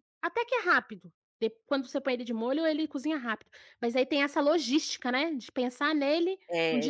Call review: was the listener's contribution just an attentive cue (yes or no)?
no